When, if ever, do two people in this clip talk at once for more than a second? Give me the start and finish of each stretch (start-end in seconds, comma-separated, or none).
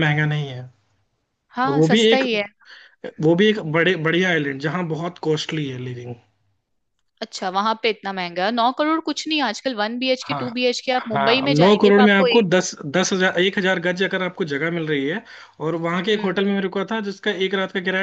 10.3-12.5